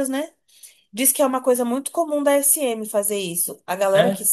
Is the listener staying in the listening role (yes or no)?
yes